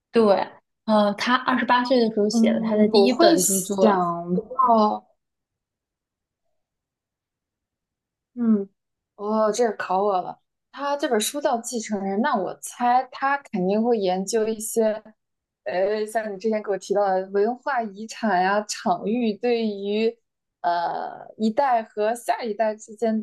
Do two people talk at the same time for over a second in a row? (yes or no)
yes